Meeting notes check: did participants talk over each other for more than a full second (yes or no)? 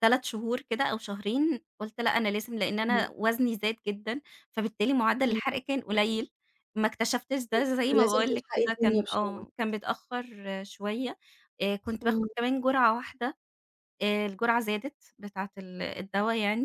yes